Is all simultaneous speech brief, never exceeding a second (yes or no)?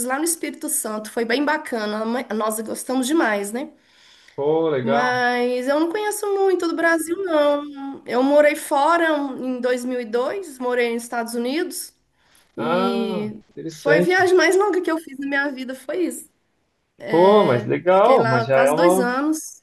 no